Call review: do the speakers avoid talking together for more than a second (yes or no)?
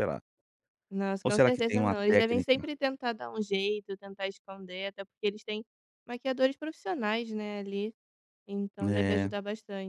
no